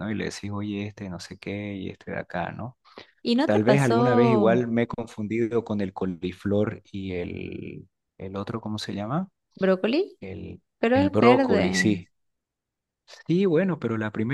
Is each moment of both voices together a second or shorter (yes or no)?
no